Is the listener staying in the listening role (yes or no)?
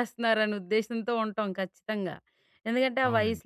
yes